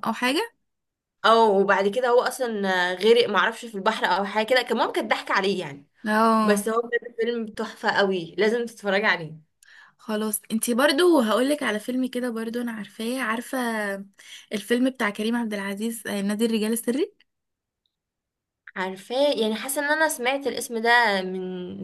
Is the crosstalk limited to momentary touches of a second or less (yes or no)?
yes